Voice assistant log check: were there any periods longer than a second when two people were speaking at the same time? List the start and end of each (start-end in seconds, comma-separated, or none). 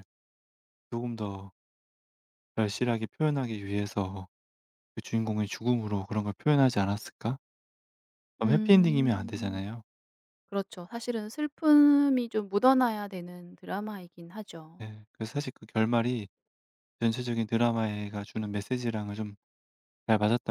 8.4-9.6